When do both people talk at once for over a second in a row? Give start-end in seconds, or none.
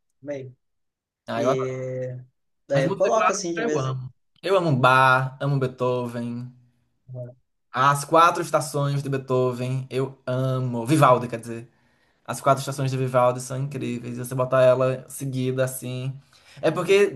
2.7-4.0